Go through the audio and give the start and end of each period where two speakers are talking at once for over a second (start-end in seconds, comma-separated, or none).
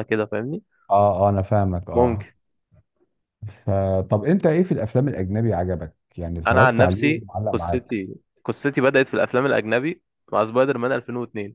6.5-8.0